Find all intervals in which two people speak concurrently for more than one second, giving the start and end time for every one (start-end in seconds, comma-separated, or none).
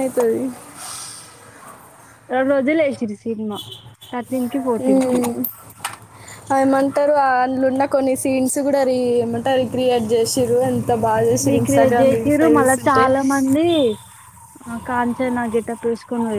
11.5-13.0